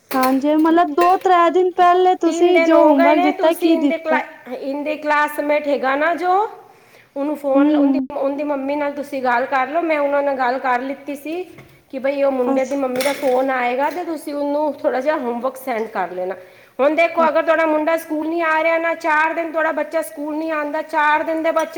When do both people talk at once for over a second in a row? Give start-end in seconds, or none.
2.2-4.1